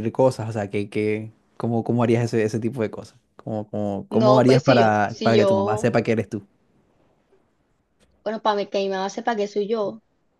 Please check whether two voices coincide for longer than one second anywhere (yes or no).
yes